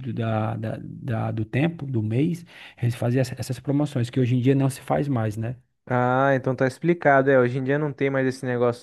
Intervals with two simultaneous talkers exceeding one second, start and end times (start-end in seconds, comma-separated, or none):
none